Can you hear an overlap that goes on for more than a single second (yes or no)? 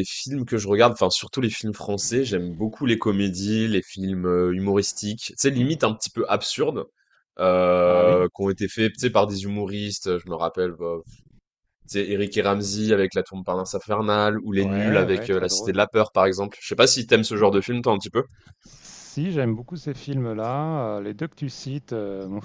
yes